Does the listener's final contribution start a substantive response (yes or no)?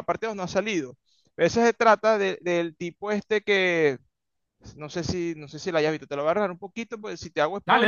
yes